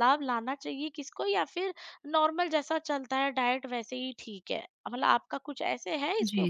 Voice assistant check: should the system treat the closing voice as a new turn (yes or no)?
yes